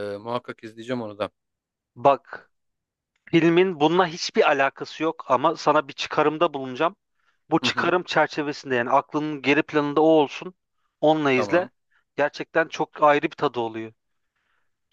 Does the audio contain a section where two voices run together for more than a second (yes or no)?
no